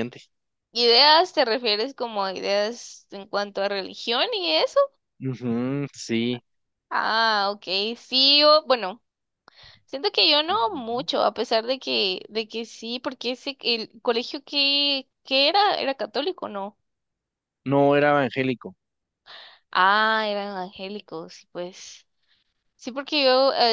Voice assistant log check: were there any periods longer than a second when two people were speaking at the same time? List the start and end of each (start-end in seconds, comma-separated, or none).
none